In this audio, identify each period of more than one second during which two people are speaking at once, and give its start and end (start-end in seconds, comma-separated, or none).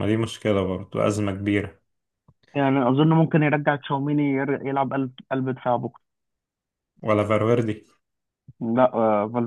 none